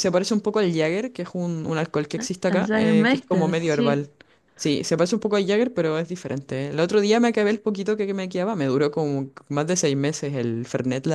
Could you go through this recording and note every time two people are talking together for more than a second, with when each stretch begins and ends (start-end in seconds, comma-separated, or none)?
2.5-4.0